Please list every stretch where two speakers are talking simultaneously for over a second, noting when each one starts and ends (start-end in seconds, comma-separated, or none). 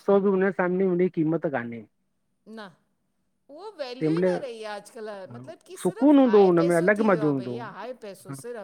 5.8-7.7